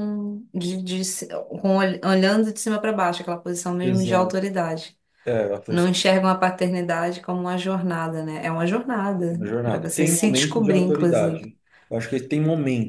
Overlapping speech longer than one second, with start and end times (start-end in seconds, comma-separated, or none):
9.3-11.4